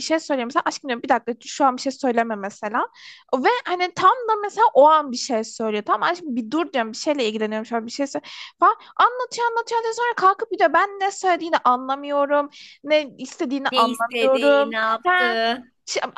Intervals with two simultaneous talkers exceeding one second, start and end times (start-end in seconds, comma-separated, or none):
13.7-15.4